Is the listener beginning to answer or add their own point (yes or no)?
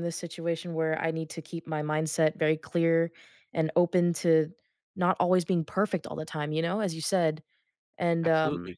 no